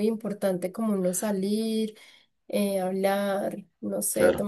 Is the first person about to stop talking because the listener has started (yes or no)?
yes